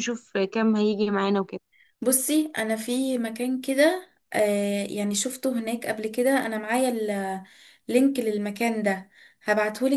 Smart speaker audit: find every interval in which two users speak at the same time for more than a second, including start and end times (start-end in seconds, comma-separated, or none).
none